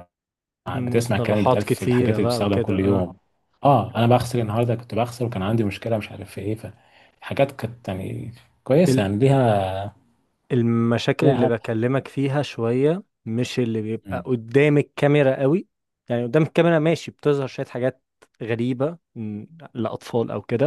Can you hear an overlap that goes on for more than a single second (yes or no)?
yes